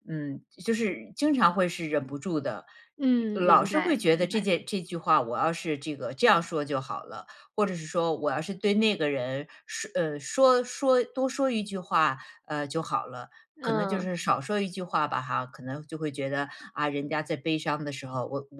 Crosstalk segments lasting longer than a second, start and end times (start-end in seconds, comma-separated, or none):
3.1-4.5